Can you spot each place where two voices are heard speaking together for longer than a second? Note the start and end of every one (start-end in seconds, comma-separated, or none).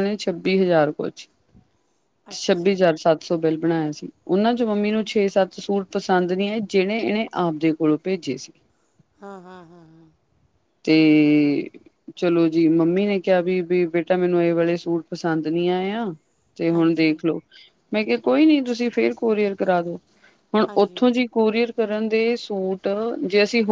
none